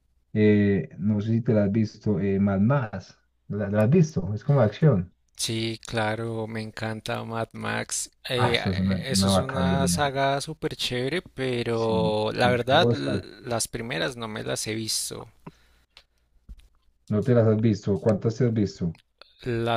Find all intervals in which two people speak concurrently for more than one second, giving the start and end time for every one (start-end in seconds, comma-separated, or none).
8.4-10.1, 11.7-13.3